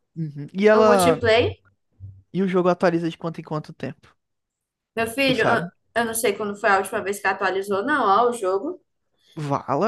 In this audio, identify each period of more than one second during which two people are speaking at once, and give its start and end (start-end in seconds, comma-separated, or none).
none